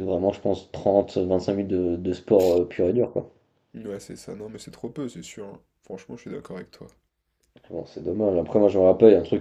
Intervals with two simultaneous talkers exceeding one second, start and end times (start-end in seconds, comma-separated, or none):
none